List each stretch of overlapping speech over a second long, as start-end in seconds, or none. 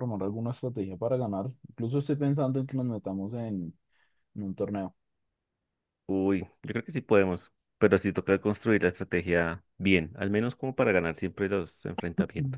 none